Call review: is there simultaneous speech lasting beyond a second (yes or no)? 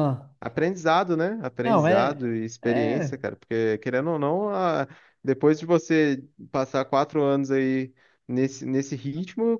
yes